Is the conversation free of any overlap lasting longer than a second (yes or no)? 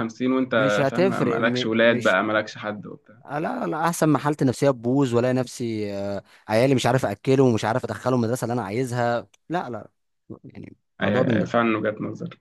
no